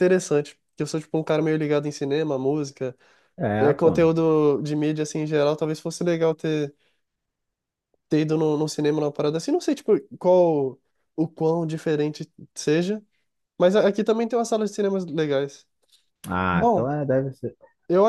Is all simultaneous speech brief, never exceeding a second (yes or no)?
yes